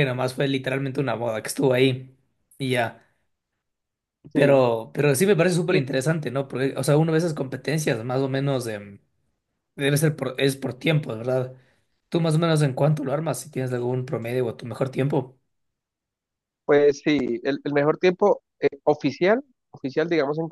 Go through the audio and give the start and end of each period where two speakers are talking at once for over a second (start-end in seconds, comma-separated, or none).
none